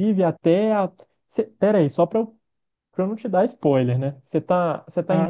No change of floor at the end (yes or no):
no